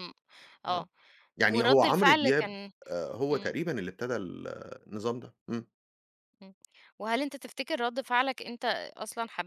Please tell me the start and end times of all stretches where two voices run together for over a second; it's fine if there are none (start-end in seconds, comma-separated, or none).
1.5-2.7